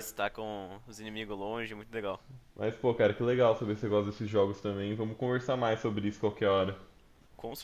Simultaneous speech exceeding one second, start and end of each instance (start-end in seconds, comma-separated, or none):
none